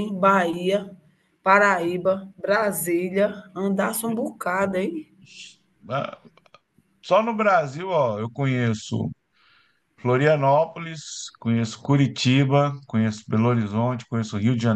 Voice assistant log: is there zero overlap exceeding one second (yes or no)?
yes